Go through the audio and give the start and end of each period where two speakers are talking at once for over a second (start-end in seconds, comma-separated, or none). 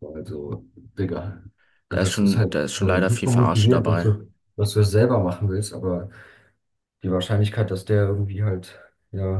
1.9-4.1